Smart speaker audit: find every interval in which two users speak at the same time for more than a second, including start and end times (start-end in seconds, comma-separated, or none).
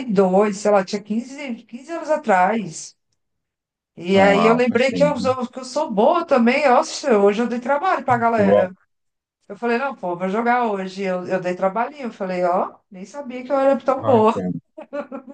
4.2-5.4